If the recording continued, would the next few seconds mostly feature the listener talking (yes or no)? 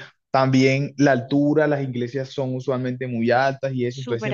no